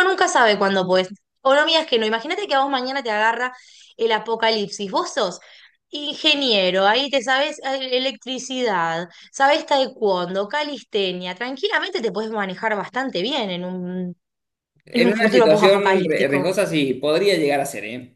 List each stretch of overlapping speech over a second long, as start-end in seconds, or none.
14.9-16.5